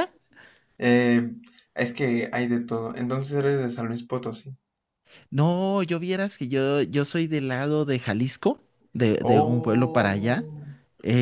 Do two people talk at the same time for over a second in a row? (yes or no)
yes